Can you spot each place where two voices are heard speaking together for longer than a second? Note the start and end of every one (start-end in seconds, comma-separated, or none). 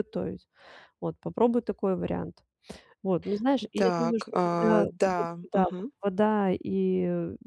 3.8-5.9